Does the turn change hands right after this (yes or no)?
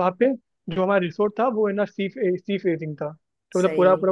no